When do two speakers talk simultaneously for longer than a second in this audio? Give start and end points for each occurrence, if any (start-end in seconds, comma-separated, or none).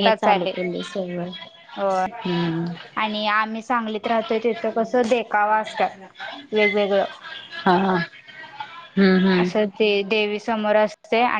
none